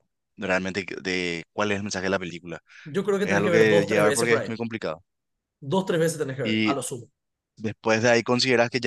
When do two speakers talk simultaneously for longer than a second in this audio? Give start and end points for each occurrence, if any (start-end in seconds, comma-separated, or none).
3.2-4.5